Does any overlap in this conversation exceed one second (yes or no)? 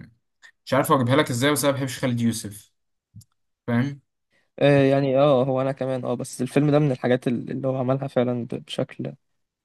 no